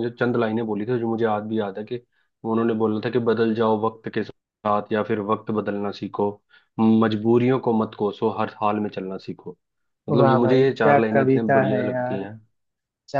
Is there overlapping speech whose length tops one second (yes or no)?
yes